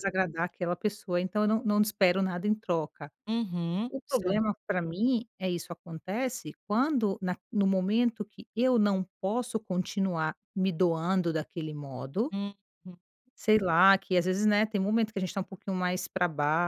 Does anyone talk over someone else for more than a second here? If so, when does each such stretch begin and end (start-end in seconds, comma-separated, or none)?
none